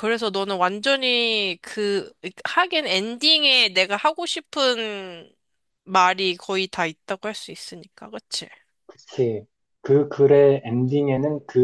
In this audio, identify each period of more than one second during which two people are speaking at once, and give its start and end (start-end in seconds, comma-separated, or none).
none